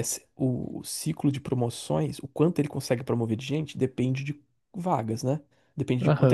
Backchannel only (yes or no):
no